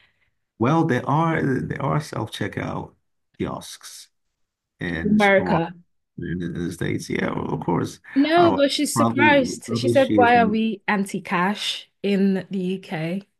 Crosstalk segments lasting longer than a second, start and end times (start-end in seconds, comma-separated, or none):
8.4-10.6